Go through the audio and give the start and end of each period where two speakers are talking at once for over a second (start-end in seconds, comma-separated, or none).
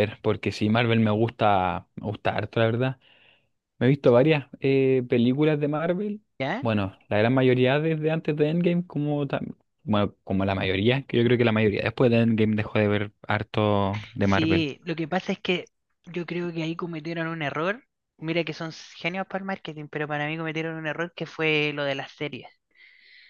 none